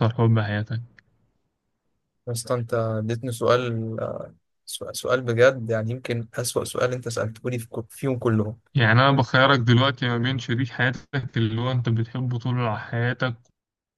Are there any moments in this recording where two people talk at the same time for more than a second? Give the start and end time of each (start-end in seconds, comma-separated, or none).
none